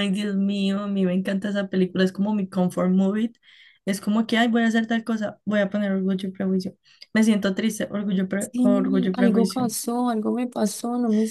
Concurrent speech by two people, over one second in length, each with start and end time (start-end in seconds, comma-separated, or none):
8.4-9.7